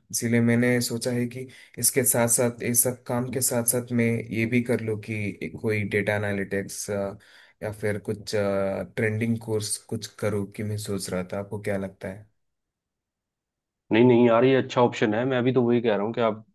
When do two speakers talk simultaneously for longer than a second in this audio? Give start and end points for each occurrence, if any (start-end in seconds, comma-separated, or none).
none